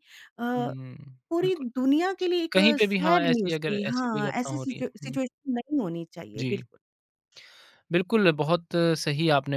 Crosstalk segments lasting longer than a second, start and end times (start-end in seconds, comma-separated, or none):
2.5-5.2